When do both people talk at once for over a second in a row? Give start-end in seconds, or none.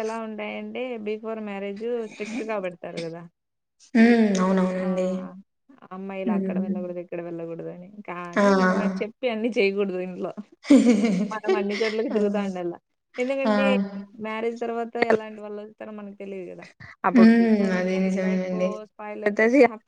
17.1-18.5